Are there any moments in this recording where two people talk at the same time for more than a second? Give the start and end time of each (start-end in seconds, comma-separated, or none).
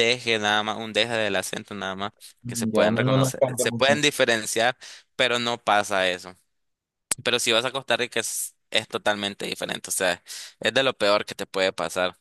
2.4-4.0